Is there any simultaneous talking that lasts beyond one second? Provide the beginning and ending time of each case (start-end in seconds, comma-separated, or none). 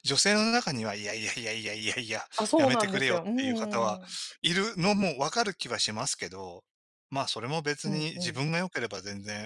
2.4-4.0